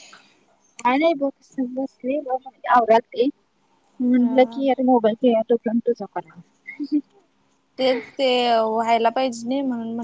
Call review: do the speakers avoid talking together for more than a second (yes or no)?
yes